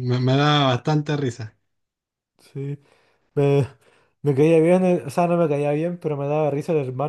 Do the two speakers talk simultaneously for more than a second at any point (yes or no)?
no